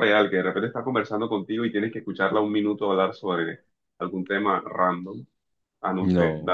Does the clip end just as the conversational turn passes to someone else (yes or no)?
no